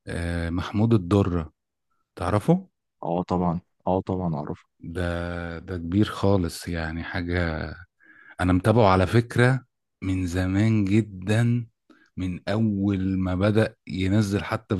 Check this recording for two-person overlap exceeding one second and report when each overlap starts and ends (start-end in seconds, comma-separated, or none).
none